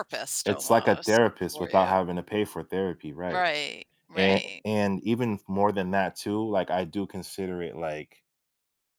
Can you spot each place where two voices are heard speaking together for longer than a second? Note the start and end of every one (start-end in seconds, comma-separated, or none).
0.7-2.0